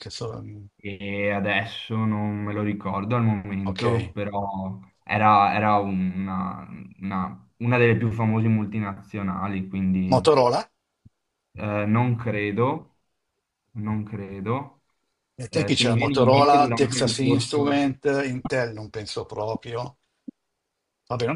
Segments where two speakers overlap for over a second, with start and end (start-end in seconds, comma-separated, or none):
15.5-17.8